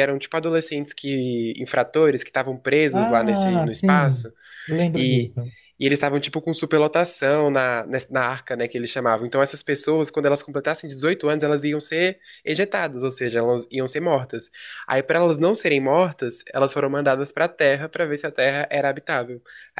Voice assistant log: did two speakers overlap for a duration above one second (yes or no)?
yes